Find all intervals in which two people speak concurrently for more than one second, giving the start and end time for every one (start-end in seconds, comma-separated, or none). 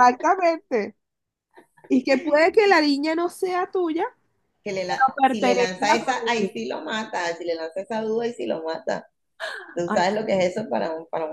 4.9-6.5